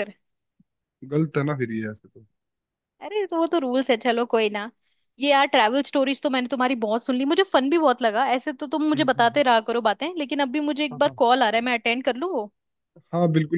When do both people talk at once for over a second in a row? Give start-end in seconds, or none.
none